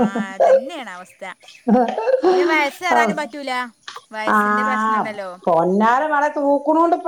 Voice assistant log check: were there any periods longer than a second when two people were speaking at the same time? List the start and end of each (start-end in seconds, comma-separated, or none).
none